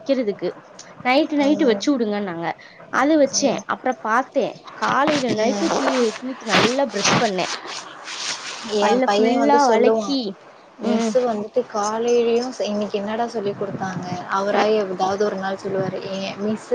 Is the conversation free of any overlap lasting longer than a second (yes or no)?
no